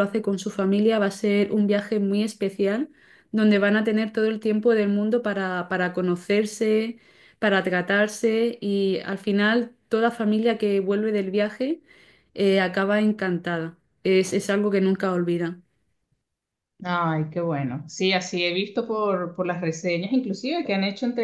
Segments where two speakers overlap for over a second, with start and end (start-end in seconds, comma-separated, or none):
none